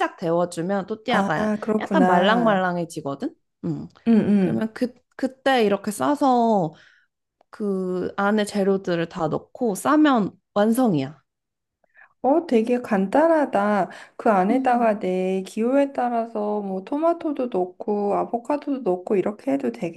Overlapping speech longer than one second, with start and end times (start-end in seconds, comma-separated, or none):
1.1-2.6